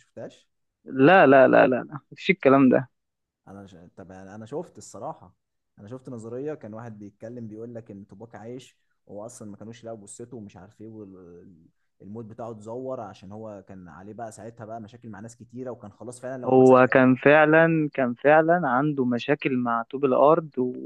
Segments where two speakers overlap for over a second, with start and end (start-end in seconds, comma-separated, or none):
none